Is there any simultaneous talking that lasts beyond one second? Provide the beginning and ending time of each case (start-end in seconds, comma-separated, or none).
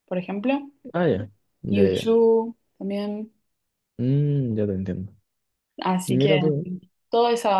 none